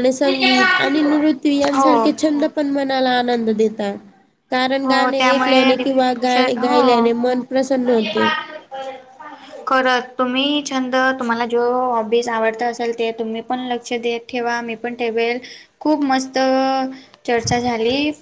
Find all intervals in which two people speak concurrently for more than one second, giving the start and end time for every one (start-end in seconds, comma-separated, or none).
4.8-7.0